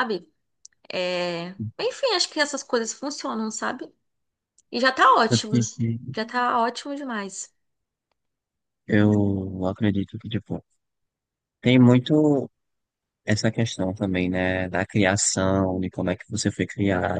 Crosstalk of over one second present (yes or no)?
no